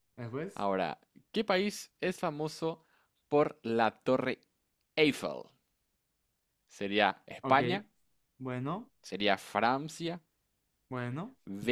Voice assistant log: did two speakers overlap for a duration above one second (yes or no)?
no